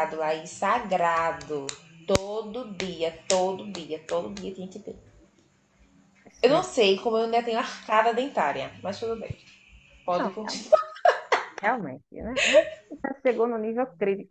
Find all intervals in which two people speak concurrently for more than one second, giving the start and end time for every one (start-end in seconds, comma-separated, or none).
none